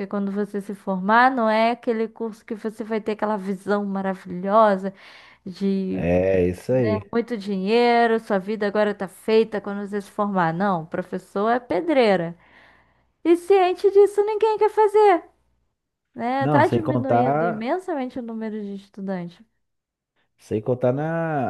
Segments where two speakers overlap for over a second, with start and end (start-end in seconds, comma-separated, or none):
16.4-17.7